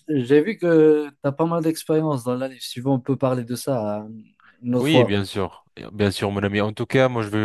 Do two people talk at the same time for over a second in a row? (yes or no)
no